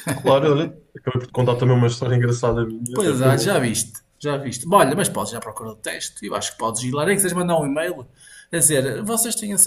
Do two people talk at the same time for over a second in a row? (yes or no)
no